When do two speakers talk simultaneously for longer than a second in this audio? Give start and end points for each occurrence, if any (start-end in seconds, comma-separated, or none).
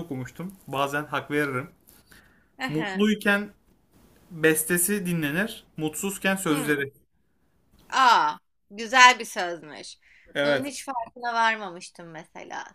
none